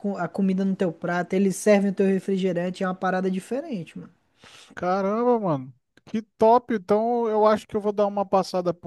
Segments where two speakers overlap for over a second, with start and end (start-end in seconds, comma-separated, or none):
none